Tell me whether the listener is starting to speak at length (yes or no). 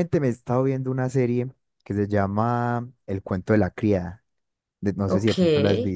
yes